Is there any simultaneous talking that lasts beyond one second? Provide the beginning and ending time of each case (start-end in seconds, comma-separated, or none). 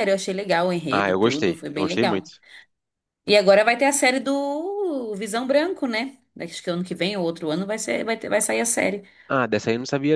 0.9-2.3